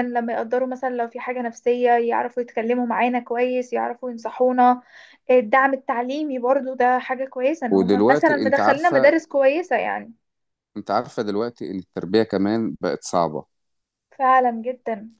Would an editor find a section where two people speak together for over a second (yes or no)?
yes